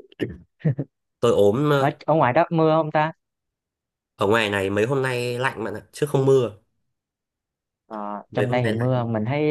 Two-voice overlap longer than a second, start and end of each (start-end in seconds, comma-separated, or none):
none